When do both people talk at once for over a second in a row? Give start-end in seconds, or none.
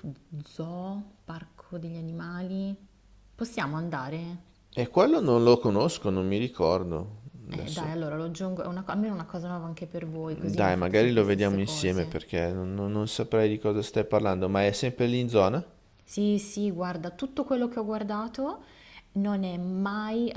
10.3-12.1